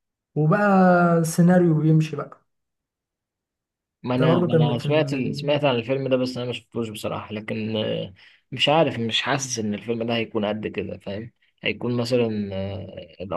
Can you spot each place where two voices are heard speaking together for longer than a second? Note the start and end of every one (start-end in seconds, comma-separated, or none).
4.2-5.5